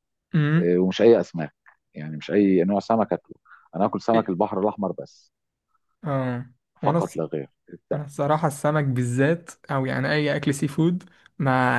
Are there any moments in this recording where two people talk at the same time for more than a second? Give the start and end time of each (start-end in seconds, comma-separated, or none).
none